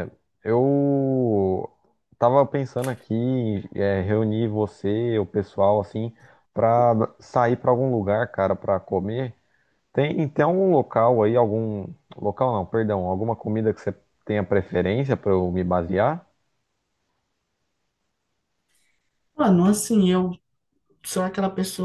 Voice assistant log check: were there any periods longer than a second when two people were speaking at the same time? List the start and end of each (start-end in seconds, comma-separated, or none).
none